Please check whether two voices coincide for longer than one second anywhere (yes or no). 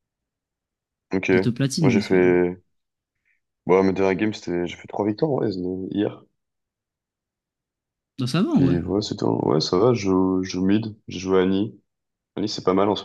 no